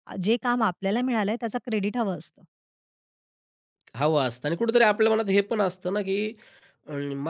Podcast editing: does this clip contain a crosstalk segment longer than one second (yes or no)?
no